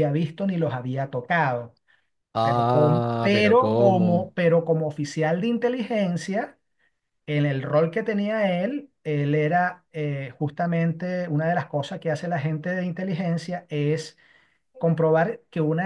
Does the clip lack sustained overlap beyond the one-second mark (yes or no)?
no